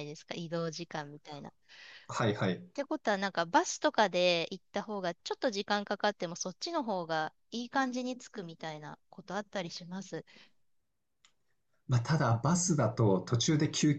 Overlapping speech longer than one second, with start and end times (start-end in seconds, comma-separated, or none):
none